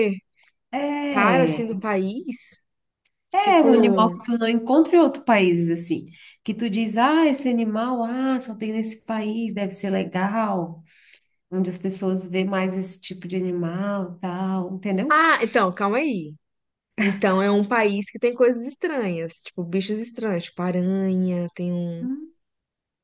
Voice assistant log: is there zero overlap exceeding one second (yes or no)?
yes